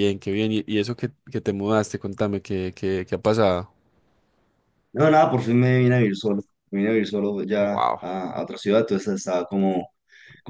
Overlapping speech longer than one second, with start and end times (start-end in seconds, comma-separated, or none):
none